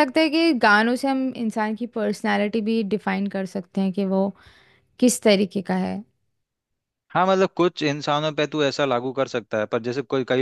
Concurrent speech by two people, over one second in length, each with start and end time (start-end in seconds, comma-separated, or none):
none